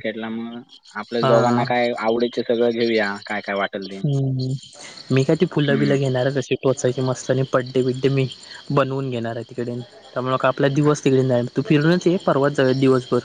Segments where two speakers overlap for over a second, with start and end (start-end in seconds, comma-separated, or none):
none